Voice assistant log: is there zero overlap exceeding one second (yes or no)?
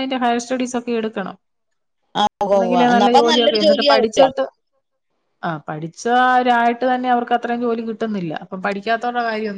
no